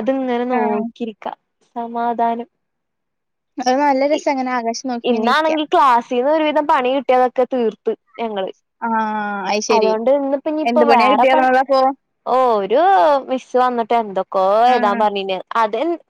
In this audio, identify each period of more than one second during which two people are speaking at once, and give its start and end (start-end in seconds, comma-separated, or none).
none